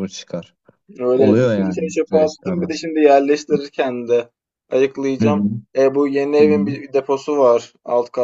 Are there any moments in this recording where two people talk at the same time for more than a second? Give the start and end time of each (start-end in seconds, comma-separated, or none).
1.1-2.8